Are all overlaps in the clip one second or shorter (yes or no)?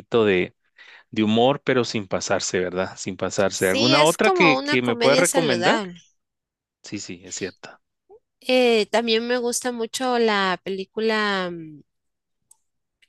no